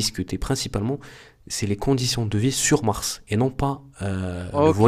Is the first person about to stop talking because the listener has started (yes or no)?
yes